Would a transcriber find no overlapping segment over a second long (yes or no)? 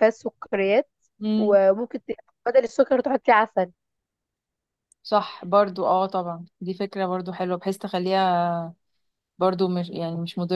yes